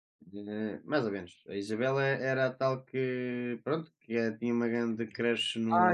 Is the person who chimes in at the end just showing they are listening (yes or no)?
no